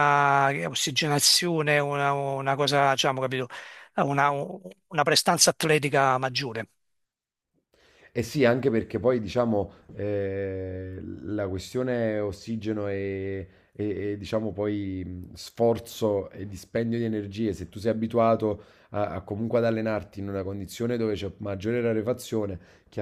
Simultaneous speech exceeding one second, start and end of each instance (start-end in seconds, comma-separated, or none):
none